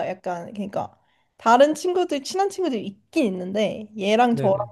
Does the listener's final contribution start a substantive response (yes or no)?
no